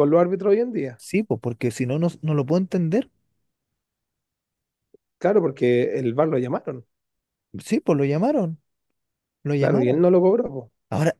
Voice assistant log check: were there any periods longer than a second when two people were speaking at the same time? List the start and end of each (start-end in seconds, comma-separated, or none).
none